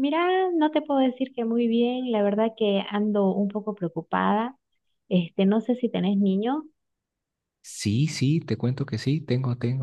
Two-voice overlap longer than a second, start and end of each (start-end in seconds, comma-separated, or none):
none